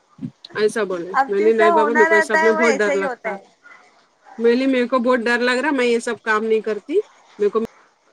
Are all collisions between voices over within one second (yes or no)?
no